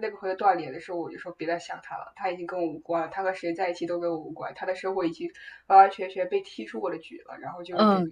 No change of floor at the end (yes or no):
no